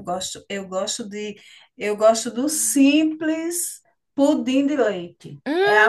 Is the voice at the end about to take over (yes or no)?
yes